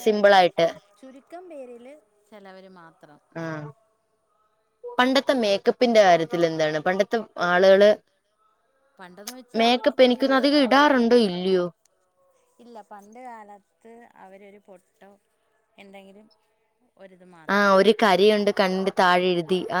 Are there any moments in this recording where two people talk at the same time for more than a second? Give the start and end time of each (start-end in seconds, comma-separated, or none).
9.6-11.2